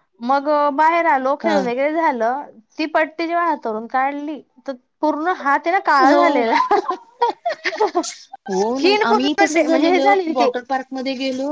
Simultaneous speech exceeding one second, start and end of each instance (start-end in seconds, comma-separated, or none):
8.6-10.5